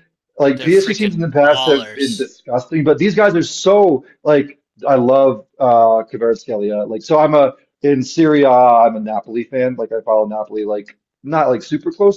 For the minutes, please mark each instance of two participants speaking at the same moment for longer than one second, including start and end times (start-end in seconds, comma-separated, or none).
0.6-2.3